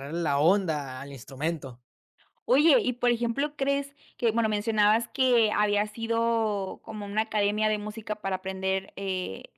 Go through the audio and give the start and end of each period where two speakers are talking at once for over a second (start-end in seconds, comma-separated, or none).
none